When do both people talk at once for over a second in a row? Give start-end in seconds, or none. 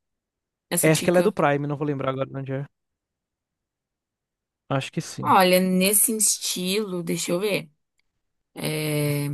none